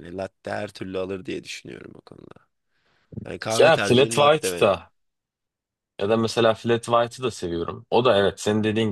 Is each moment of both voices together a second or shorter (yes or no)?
no